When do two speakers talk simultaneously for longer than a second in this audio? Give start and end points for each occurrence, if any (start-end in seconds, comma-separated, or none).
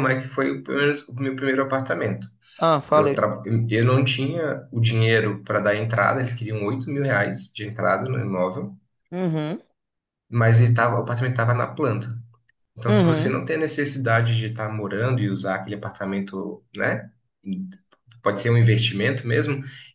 none